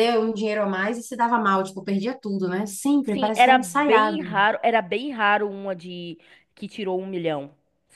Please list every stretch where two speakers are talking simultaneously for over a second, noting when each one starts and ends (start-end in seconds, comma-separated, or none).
3.0-4.3